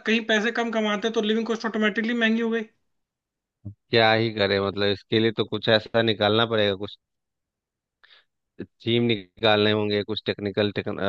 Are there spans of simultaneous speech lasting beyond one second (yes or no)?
no